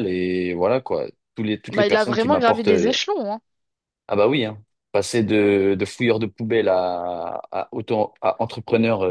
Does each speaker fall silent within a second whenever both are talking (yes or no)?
no